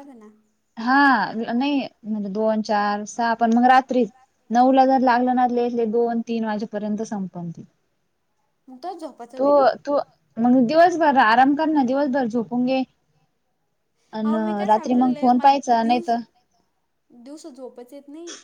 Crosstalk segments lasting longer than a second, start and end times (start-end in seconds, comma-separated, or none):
14.7-16.1